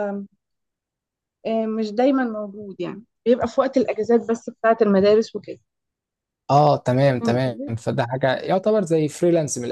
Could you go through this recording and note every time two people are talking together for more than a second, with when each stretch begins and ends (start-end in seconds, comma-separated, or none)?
none